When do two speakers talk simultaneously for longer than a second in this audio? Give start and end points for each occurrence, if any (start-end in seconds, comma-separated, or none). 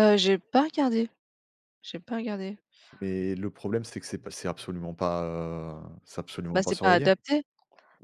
none